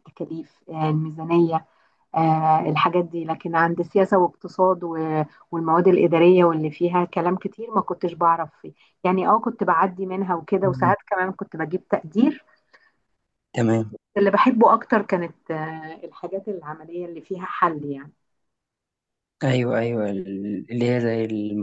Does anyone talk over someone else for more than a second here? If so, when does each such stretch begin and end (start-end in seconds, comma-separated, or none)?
none